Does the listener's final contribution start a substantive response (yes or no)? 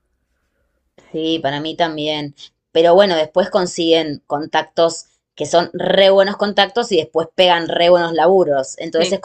no